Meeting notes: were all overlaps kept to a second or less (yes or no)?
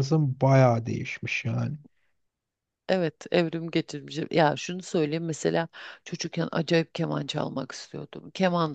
yes